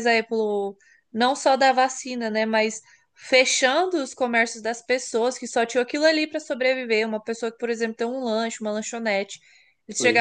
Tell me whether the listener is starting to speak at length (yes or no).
no